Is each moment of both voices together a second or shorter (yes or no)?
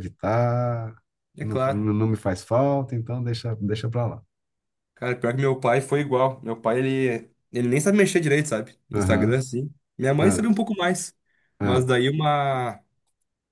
yes